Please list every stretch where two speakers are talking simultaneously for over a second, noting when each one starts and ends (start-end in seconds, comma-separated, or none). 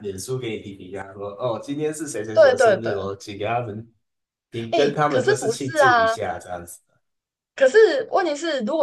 4.7-6.1